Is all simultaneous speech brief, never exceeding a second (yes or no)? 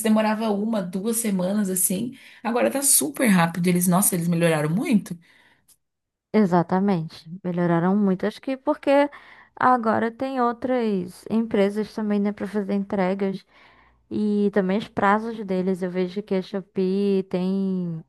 yes